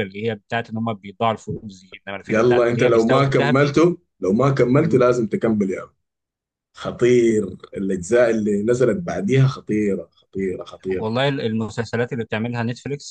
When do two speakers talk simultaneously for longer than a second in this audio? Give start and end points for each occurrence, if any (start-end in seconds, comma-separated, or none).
2.3-3.8